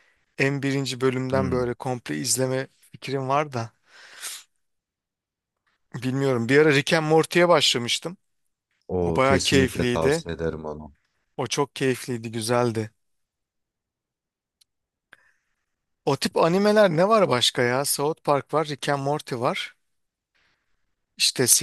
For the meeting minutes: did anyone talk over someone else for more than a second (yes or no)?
yes